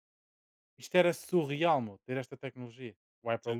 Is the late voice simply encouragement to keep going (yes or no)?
no